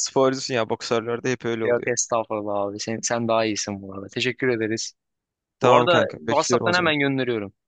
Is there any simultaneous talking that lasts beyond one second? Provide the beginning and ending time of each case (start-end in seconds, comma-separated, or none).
5.6-7.0